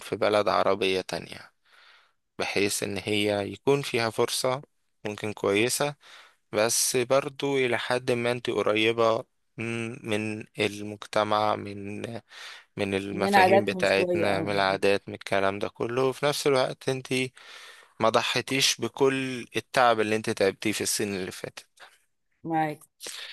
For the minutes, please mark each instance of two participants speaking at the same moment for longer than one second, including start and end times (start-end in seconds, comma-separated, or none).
13.1-14.5